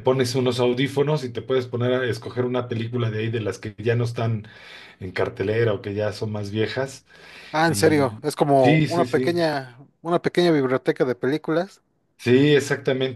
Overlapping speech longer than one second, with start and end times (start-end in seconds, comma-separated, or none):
7.7-9.4